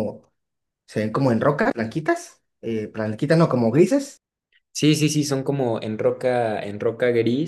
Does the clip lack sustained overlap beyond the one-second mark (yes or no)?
yes